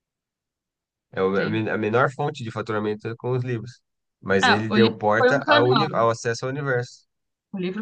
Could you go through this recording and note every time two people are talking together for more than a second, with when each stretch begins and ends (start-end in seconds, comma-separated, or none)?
4.4-5.9